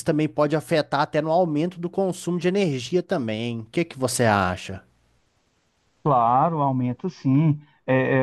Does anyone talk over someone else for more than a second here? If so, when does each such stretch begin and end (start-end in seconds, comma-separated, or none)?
none